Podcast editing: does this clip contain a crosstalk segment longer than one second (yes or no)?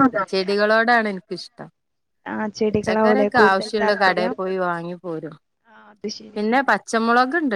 yes